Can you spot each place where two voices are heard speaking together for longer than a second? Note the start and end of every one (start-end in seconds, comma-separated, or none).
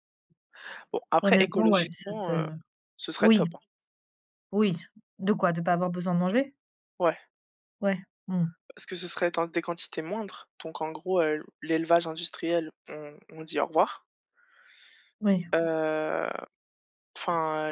1.2-2.5